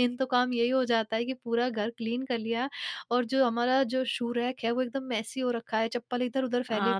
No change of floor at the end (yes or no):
no